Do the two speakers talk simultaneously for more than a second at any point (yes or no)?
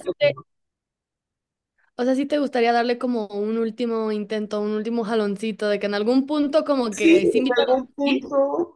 yes